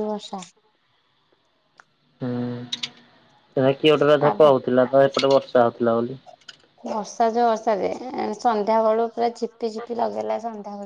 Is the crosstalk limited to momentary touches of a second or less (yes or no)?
yes